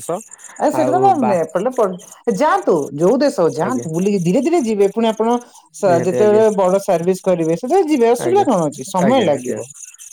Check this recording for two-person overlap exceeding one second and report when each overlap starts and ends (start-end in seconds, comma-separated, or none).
none